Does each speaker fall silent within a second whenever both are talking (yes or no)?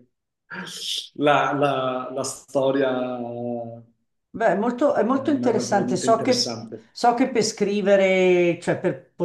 no